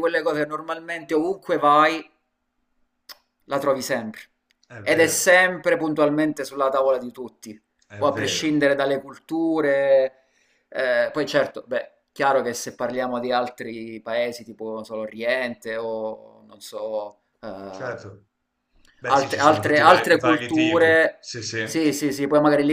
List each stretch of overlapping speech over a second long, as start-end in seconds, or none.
19.1-21.2